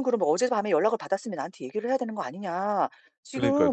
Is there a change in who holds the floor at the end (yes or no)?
no